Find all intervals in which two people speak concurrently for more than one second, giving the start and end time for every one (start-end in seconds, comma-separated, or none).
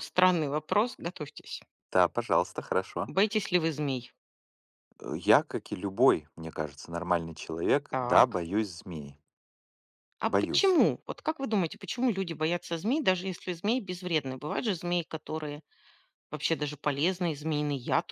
none